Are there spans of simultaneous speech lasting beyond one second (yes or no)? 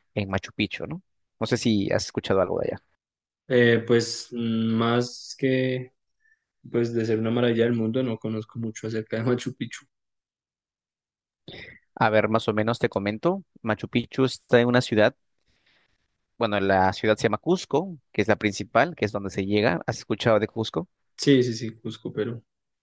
no